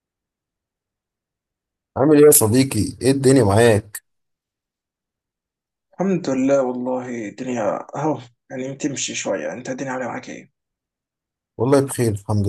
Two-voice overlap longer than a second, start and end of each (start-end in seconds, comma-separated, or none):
none